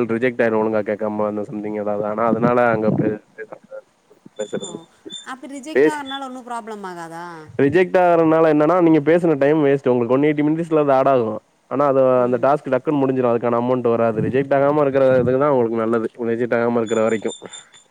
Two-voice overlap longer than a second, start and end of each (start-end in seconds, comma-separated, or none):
none